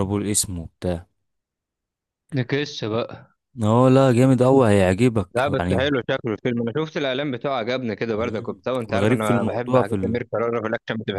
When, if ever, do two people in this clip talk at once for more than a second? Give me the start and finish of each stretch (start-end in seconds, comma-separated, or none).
8.1-10.2